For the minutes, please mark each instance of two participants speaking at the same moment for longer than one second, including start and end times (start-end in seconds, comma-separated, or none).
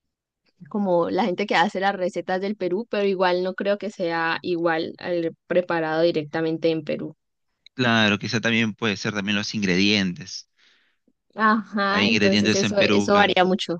11.9-13.3